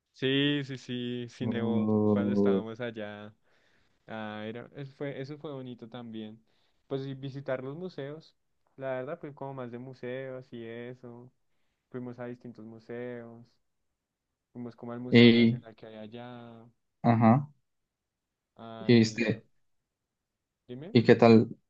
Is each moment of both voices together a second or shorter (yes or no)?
no